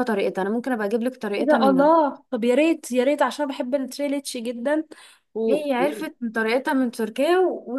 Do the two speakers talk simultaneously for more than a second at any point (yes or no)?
no